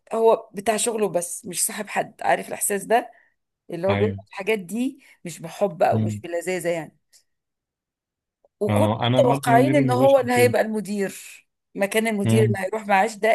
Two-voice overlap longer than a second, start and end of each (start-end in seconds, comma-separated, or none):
8.7-10.5